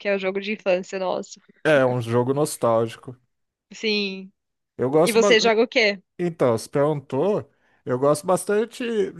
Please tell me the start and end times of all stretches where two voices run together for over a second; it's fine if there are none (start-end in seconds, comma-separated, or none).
none